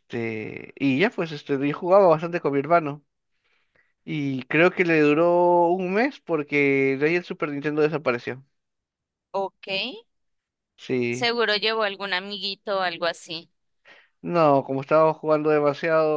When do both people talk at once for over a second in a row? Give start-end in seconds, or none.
none